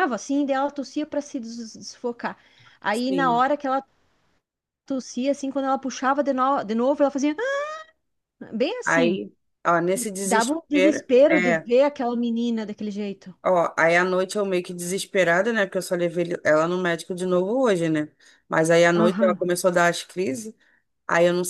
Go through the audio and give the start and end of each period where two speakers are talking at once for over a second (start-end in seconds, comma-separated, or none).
10.2-11.7